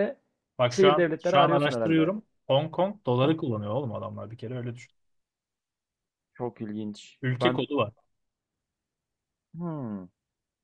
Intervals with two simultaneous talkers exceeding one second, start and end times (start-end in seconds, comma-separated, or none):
0.7-2.1